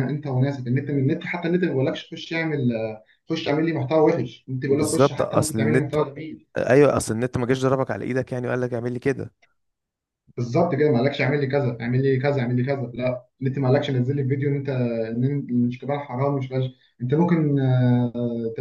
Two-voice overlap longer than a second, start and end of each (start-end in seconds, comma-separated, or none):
4.7-6.0